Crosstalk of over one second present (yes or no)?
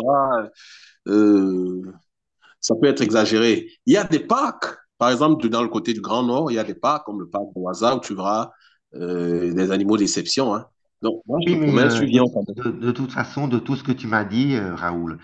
yes